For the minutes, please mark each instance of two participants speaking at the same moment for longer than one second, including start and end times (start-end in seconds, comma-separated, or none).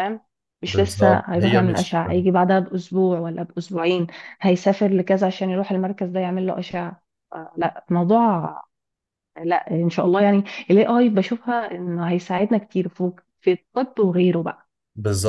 0.7-2.0